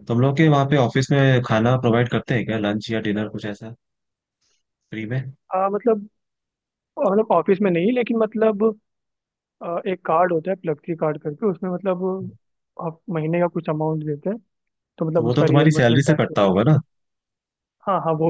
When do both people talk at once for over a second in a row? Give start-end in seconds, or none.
15.1-16.6